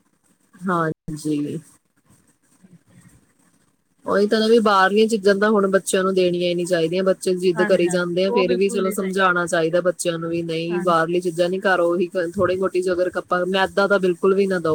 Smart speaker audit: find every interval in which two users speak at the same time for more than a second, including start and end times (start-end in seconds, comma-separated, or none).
7.6-9.3